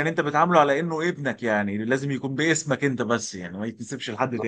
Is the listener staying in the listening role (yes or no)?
no